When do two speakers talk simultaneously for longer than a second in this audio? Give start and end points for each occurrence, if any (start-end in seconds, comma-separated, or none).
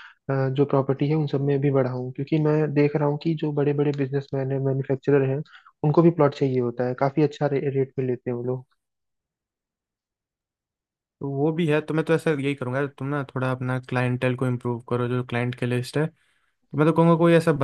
none